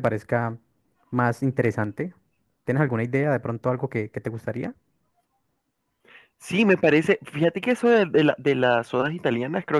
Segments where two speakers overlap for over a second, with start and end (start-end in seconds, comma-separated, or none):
none